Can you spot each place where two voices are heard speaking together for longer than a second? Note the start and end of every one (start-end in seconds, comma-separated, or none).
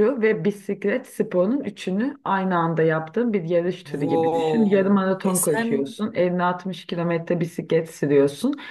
4.0-5.7